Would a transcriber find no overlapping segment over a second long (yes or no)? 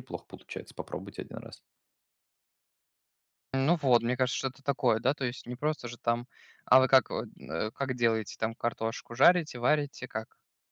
yes